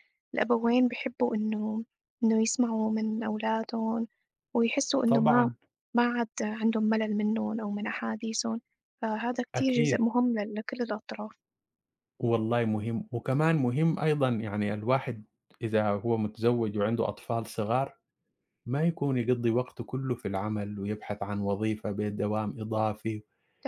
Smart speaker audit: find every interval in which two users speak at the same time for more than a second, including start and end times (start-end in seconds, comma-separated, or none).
none